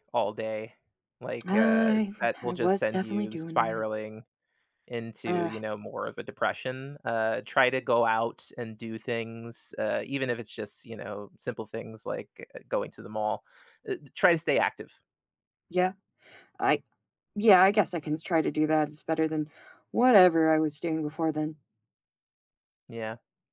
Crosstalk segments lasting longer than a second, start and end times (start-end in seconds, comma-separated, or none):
1.5-3.8